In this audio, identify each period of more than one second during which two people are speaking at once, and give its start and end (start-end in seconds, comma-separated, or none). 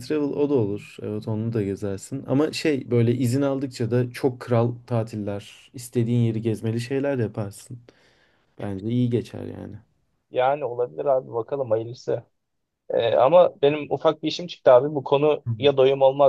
none